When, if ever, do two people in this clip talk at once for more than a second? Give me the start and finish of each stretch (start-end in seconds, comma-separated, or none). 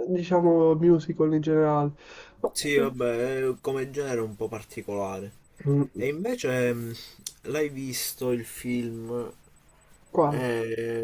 none